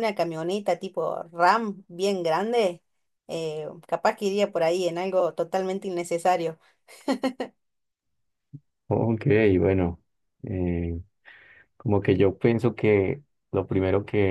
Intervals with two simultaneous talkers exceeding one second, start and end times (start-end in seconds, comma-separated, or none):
none